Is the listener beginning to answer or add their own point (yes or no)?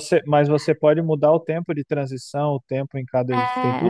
yes